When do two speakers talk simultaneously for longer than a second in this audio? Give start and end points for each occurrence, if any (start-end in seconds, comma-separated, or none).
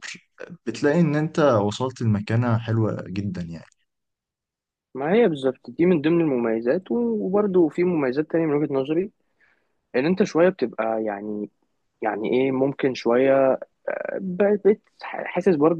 none